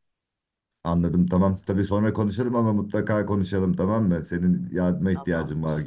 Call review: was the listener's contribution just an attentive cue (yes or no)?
yes